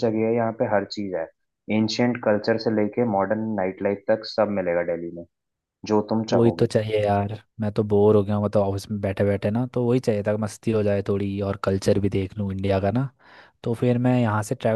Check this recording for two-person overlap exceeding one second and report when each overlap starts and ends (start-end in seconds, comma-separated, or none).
none